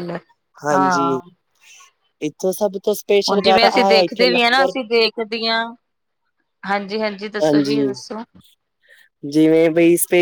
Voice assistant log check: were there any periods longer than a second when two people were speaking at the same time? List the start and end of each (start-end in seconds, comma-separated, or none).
3.3-4.7